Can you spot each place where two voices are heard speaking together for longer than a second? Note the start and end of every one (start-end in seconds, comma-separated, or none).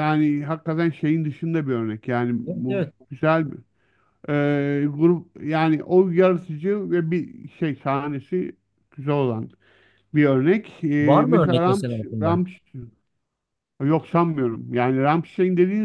11.0-12.4